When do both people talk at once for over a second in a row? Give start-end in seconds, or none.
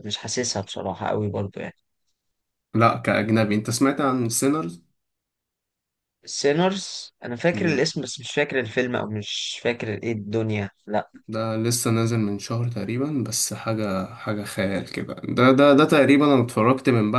none